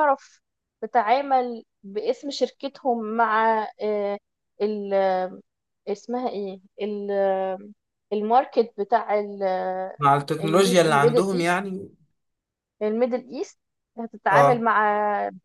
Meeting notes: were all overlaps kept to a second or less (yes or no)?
no